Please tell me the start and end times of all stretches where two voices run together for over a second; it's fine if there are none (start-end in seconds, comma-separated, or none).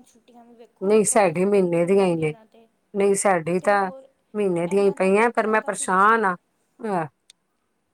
0.9-2.4, 4.7-6.2